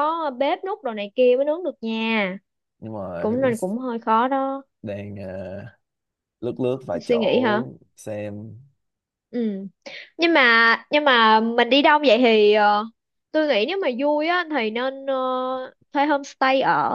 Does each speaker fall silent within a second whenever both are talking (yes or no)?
yes